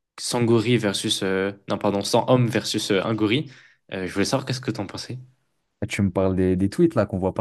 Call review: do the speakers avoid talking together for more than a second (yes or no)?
yes